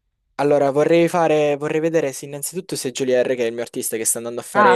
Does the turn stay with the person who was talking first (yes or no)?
yes